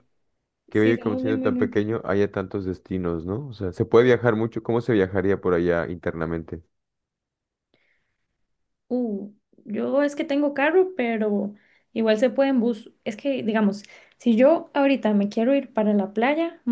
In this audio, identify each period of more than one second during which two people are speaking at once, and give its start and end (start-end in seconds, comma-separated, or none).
0.7-2.0